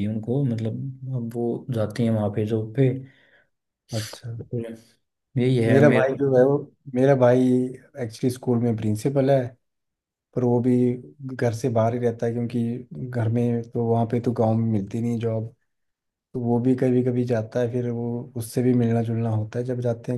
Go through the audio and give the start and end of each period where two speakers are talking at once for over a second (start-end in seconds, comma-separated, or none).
none